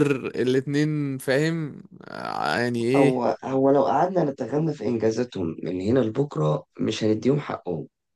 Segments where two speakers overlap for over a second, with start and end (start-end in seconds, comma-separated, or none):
none